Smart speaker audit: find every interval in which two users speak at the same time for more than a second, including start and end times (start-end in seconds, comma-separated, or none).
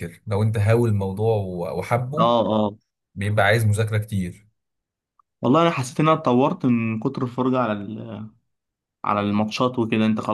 none